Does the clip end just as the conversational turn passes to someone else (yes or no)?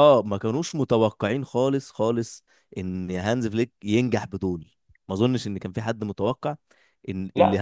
yes